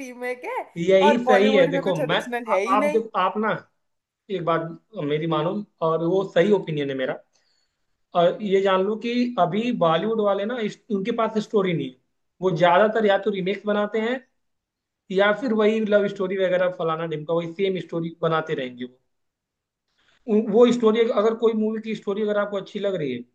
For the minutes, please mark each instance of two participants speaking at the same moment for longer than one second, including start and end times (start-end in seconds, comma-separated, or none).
1.1-3.0